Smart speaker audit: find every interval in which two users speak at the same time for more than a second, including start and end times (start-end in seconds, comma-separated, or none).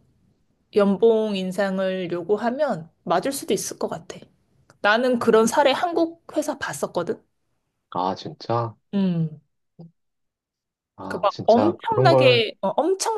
11.0-12.4